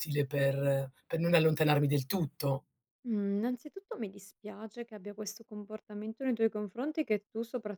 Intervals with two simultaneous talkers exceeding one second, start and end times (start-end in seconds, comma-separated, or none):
none